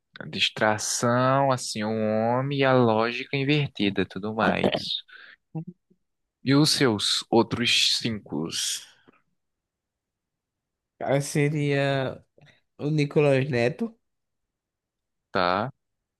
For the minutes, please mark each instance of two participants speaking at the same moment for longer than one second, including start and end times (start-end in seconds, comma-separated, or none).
none